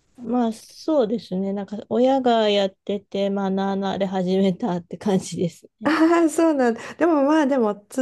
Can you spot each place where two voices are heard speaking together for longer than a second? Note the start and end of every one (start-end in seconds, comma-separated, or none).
none